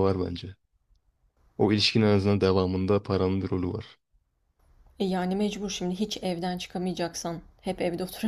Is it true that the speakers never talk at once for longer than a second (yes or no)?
yes